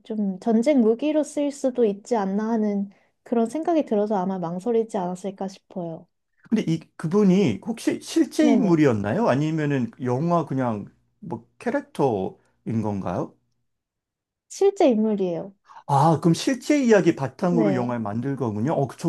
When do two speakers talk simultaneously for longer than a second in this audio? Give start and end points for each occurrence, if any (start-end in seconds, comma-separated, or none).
none